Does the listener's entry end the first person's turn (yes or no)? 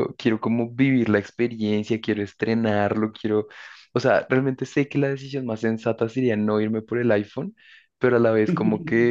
no